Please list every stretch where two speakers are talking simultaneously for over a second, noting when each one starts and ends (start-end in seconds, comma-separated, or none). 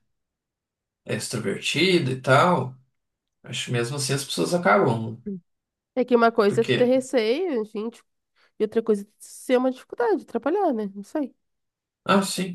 none